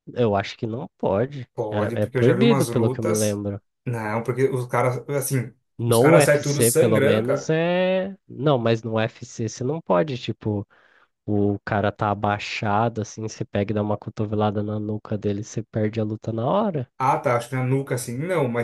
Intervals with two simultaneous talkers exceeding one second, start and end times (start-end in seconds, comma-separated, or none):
1.5-3.4, 5.8-7.5